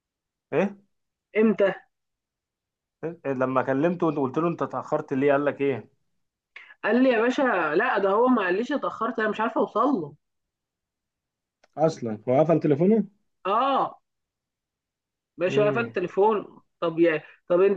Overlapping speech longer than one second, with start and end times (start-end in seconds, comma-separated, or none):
none